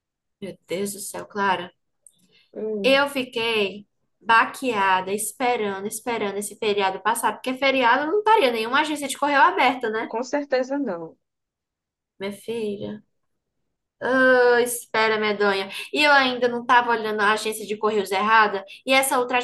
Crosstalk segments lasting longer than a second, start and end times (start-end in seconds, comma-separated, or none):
none